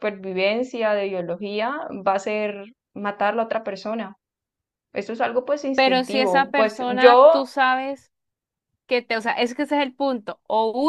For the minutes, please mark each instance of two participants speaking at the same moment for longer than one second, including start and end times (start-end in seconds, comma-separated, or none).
5.8-7.4